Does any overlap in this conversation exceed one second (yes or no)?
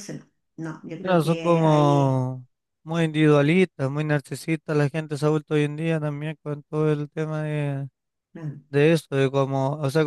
yes